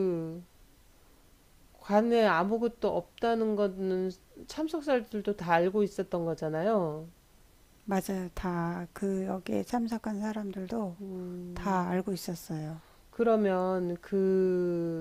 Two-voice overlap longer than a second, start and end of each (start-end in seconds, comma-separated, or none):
none